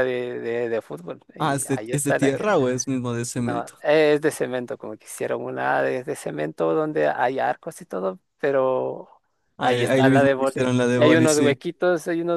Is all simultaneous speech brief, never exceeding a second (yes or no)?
no